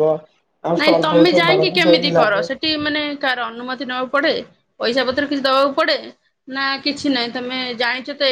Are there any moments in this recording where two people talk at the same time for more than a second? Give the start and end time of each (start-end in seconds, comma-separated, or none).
0.8-2.4